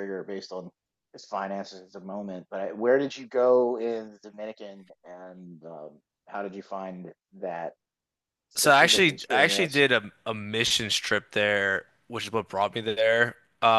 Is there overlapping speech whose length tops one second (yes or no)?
yes